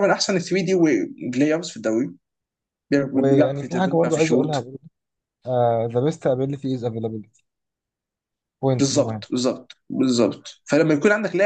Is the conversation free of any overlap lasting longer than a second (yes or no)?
no